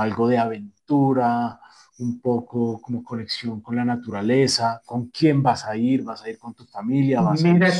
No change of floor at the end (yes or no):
no